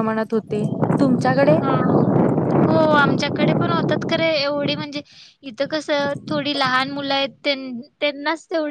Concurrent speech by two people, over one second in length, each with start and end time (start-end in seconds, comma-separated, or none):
none